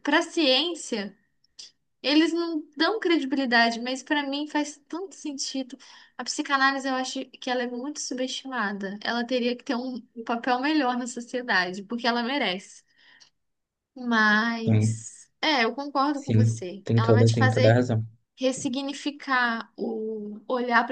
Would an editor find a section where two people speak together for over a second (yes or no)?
yes